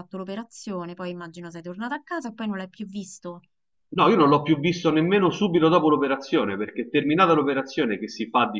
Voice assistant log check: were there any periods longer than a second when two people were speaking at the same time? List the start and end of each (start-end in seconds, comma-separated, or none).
none